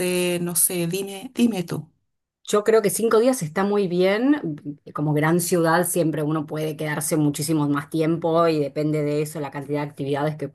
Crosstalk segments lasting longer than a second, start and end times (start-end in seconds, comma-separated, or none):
none